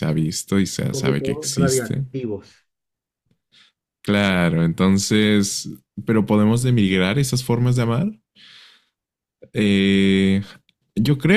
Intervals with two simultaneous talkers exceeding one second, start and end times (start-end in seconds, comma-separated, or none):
0.8-2.1